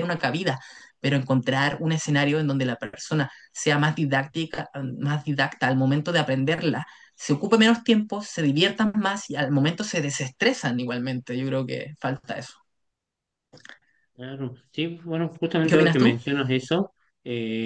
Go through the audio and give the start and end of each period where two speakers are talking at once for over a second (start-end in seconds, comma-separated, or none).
none